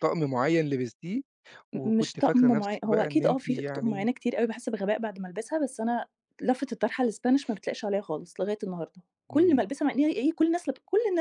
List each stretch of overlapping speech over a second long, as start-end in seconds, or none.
1.7-4.1